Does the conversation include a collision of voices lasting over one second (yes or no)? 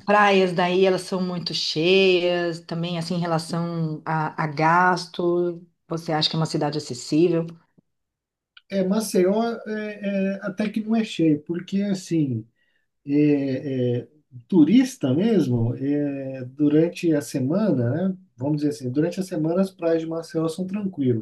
no